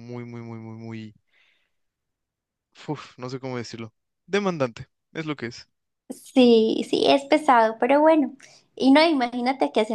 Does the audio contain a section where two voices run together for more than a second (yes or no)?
no